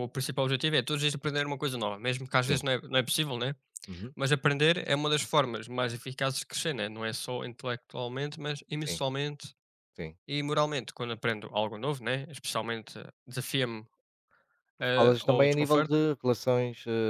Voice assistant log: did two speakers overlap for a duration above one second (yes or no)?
yes